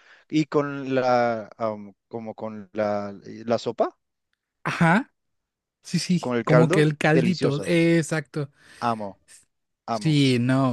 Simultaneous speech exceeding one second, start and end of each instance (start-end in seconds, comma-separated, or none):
6.2-7.7